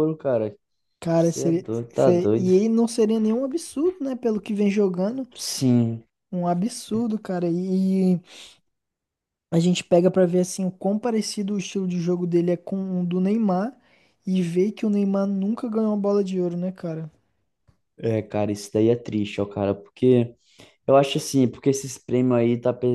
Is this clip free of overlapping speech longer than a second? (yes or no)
no